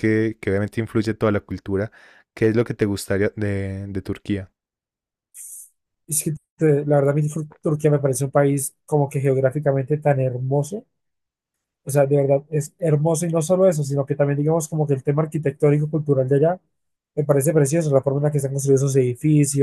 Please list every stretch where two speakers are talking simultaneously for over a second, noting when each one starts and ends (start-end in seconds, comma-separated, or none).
none